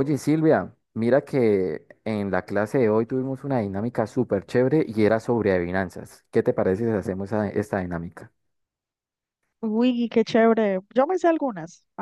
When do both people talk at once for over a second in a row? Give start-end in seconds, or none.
none